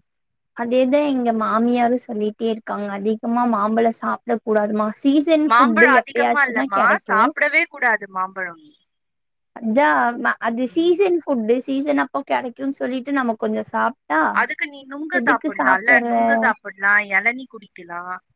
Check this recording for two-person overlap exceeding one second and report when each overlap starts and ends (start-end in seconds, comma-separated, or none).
5.5-7.1